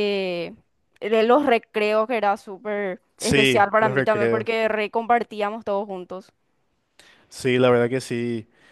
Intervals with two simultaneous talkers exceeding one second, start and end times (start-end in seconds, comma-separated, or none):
3.2-4.5